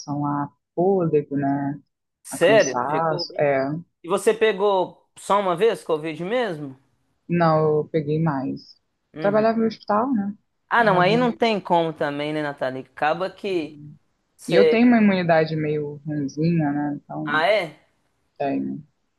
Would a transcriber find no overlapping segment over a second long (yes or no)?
no